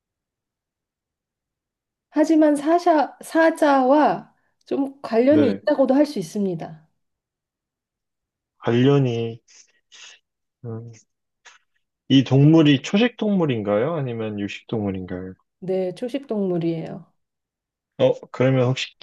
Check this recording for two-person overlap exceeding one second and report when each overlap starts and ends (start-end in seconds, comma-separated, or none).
none